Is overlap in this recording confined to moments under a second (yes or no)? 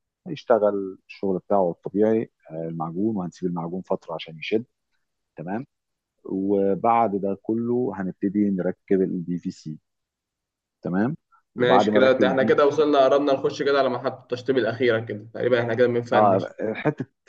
no